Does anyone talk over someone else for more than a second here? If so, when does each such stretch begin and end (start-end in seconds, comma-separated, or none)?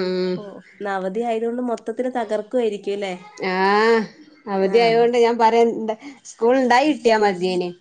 none